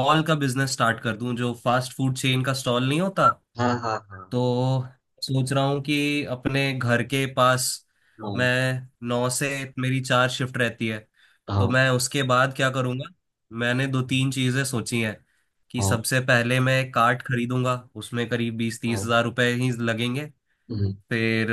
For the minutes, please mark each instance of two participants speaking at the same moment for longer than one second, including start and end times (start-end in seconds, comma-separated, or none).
none